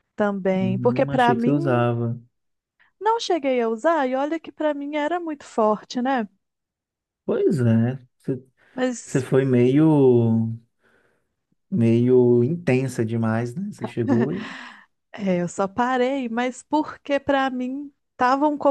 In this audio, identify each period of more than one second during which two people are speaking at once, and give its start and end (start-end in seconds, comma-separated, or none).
0.5-1.9